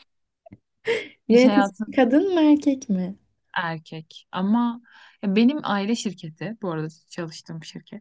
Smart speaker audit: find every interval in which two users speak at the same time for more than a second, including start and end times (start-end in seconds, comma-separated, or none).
none